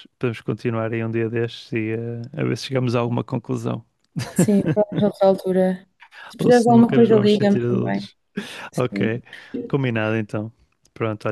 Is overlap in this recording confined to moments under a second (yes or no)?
no